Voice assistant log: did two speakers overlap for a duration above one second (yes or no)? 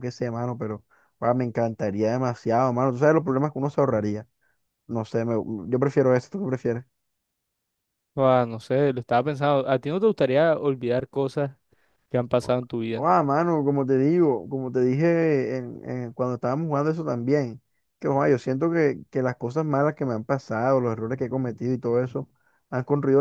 no